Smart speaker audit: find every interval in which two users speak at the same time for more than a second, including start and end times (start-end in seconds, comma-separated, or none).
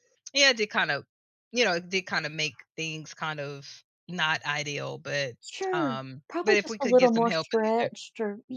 5.7-7.9